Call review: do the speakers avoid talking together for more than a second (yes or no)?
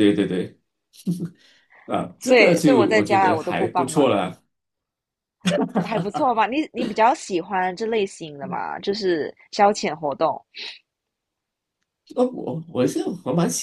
no